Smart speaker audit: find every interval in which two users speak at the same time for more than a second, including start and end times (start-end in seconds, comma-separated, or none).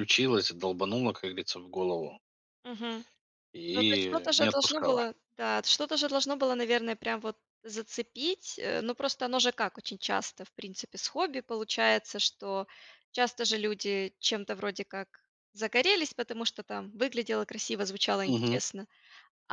3.7-5.0